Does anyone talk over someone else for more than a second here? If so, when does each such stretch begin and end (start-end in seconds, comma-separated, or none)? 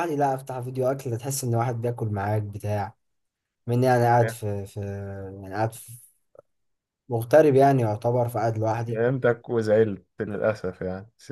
none